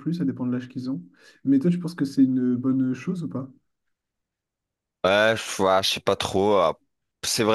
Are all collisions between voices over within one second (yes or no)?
yes